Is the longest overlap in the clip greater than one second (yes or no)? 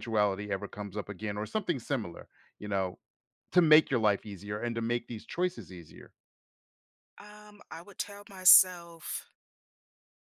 no